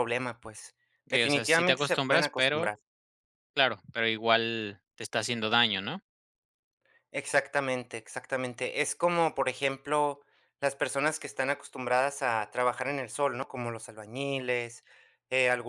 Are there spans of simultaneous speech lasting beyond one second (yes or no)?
yes